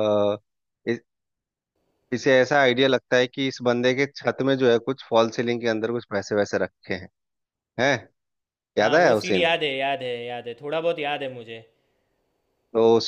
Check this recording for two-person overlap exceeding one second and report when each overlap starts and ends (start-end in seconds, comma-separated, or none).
none